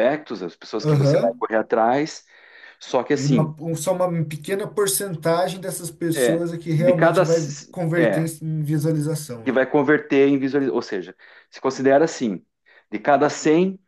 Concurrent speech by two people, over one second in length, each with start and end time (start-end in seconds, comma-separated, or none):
6.1-8.3